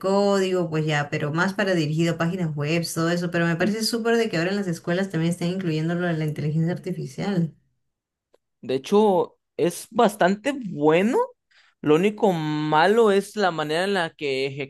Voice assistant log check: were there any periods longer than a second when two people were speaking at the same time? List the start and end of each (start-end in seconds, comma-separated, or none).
none